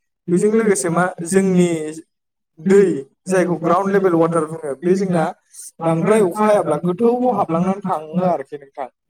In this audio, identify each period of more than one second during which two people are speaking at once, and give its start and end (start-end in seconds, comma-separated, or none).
6.4-8.3